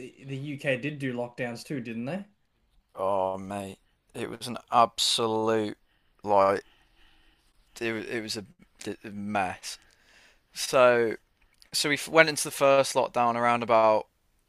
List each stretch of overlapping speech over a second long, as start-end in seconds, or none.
none